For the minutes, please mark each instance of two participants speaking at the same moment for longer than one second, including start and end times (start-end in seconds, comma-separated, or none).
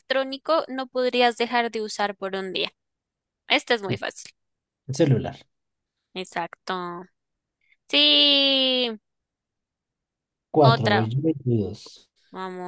none